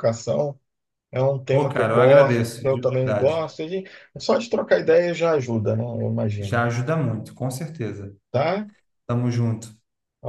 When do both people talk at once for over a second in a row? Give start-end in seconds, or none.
1.5-3.4